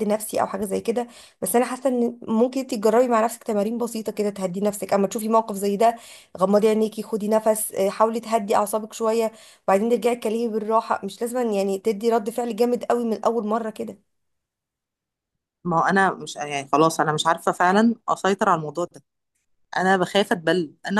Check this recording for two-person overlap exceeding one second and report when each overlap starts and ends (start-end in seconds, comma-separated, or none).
none